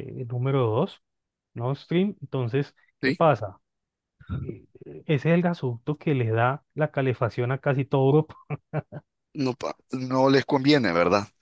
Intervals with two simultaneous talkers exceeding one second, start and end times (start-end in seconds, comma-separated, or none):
none